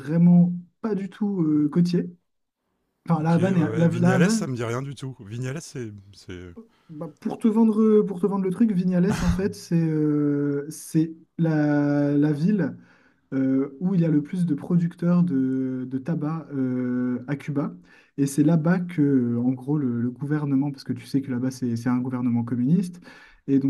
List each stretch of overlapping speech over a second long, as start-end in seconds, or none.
3.1-4.5